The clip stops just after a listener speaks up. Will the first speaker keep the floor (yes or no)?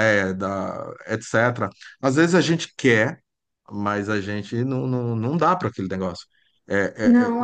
yes